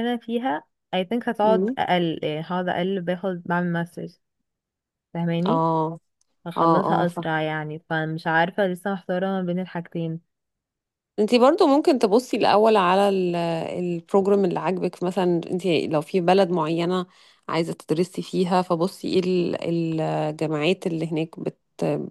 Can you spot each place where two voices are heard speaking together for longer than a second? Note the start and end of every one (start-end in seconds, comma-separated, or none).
none